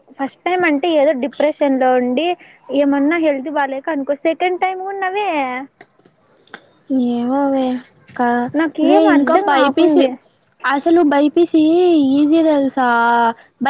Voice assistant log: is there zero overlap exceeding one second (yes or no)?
no